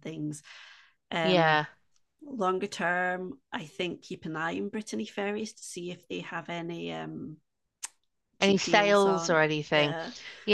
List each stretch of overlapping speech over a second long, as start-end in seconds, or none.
8.4-9.9